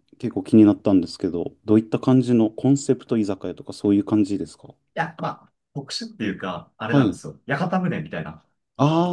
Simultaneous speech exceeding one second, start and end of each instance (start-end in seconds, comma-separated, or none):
none